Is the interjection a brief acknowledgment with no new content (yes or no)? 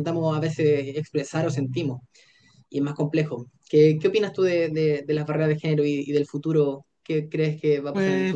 no